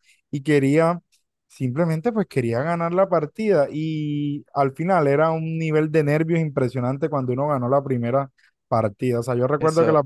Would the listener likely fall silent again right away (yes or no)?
yes